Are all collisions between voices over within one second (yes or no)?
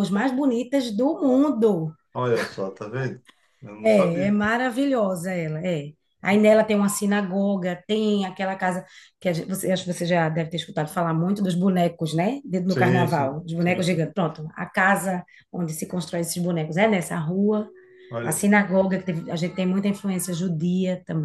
no